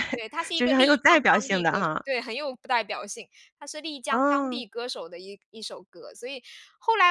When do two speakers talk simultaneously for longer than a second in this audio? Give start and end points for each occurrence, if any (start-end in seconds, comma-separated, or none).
0.5-2.0